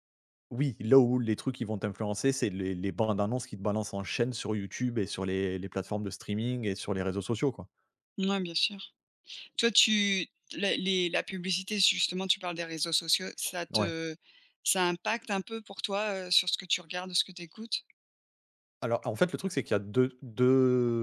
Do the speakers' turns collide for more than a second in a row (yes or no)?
no